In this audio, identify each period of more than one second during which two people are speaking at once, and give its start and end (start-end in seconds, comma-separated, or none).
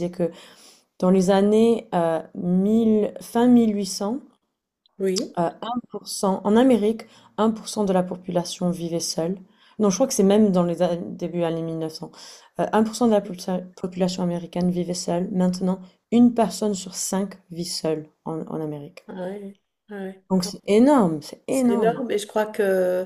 none